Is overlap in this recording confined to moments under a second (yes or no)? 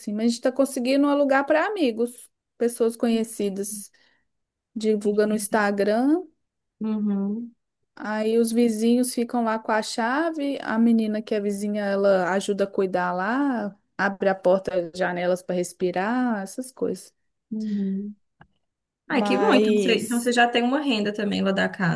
no